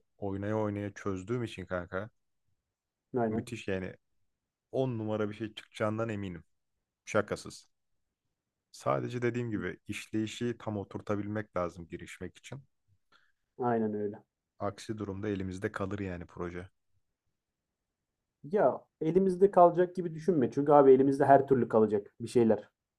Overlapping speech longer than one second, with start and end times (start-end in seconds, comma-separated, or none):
none